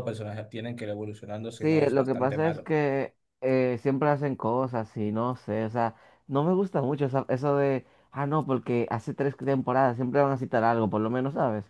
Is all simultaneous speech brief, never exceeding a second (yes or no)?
no